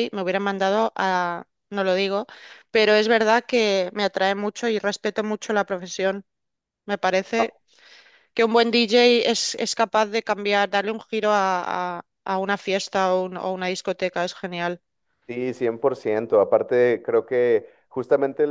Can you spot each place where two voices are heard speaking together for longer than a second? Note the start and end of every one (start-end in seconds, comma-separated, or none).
none